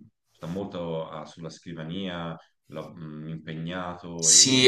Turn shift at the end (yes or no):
yes